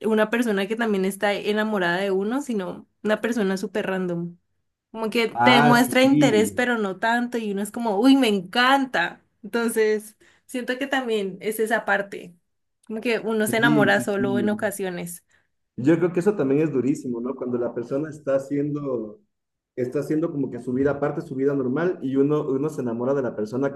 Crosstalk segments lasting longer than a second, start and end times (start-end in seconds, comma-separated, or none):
5.3-6.6, 13.4-14.8